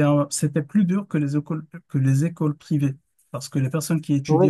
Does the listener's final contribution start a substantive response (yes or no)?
no